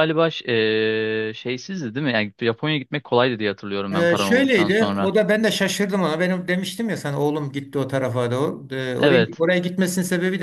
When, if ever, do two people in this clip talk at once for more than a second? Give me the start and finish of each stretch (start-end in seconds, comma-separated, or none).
3.9-5.1